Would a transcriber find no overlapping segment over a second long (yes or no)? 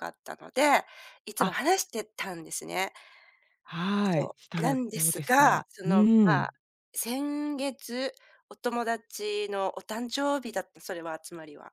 no